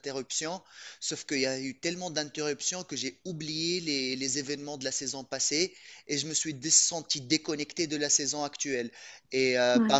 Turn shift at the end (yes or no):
no